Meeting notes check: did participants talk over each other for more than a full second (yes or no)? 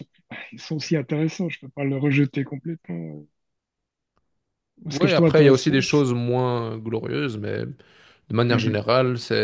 yes